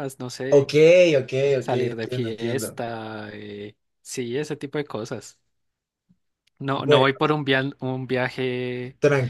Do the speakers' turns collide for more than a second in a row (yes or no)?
yes